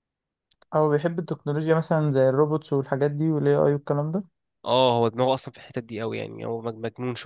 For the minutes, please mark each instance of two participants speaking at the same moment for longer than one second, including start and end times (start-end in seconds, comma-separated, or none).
none